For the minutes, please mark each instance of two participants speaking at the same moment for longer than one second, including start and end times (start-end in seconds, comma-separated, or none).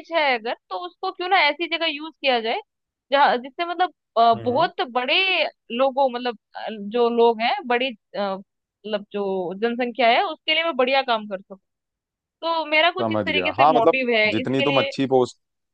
13.0-14.9